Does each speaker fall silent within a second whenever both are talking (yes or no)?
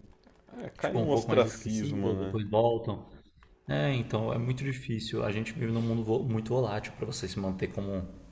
no